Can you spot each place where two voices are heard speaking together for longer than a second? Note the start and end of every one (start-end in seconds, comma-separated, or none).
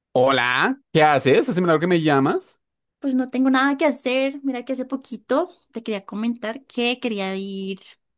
none